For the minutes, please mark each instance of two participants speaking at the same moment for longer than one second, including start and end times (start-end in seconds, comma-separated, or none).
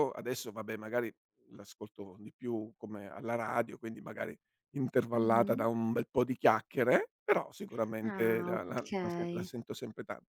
8.0-9.5